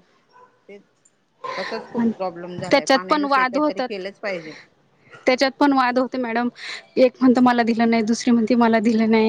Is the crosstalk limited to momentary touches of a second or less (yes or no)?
no